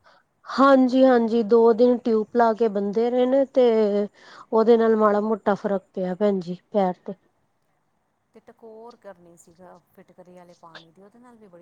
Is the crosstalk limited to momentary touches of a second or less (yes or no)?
yes